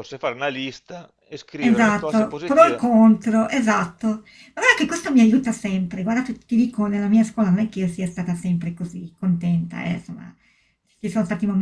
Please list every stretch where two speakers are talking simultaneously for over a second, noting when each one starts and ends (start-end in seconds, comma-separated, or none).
1.7-2.9